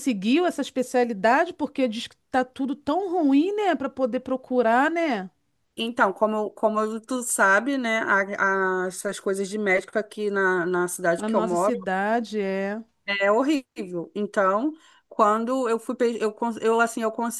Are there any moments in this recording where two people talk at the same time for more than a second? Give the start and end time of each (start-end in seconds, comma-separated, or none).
none